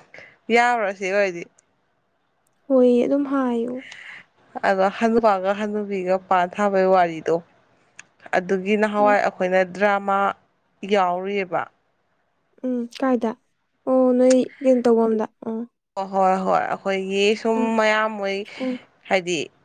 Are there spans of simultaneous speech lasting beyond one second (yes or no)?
no